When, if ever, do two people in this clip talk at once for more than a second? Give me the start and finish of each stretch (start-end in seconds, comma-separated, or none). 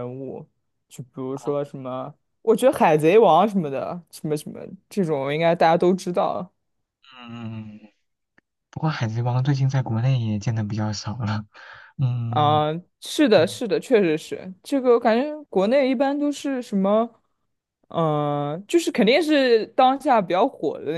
none